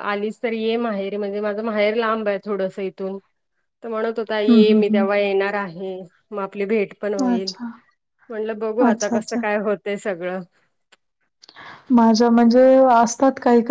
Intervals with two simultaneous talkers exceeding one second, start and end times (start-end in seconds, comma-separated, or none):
none